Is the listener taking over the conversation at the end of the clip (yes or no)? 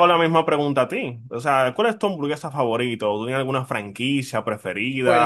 yes